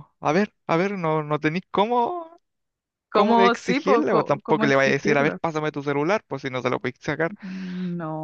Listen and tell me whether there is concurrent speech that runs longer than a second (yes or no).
yes